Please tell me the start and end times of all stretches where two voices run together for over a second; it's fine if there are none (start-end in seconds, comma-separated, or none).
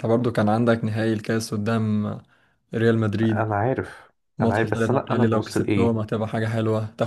4.4-6.0